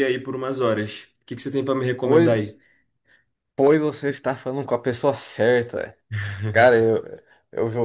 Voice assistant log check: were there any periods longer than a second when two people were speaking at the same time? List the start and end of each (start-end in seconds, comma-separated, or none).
none